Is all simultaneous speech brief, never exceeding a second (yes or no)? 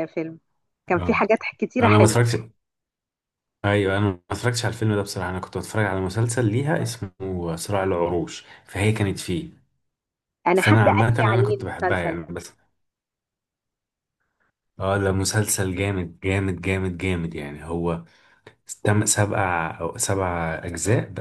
no